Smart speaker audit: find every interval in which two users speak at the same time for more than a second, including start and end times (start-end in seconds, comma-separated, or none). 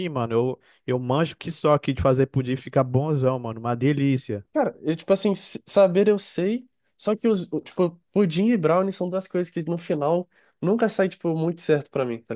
none